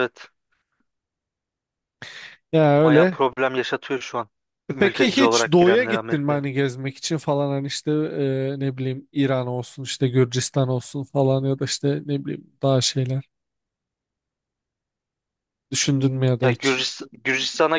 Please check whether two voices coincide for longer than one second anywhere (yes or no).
yes